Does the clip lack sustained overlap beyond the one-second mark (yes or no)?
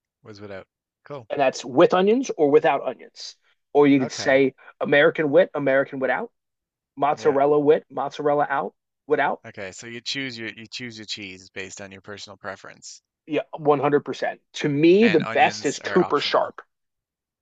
no